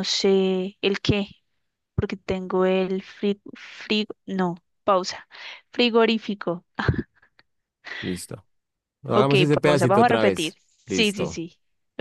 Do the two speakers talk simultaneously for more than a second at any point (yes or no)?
yes